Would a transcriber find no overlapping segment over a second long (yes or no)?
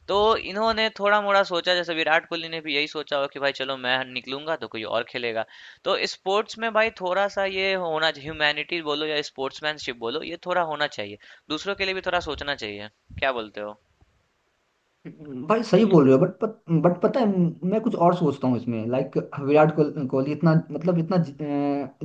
yes